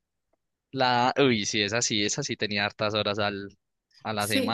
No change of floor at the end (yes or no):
no